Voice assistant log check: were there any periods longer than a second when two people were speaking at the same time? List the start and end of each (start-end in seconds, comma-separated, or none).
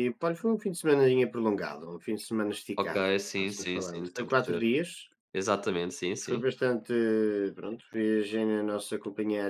2.8-4.6